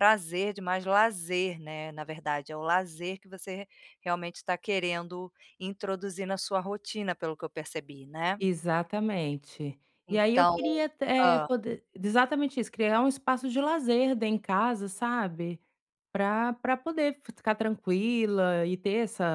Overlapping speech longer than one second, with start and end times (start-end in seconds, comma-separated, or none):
none